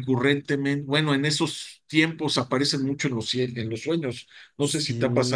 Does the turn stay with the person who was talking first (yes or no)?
no